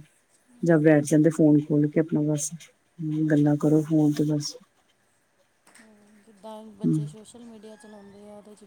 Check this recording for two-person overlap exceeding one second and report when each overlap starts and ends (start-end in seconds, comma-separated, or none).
none